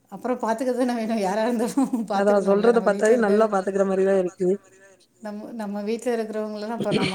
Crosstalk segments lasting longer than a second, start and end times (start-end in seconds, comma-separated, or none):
2.2-4.5